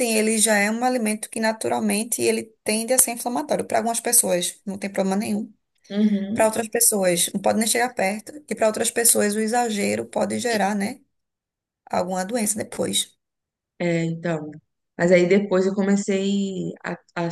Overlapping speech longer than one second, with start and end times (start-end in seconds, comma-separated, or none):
none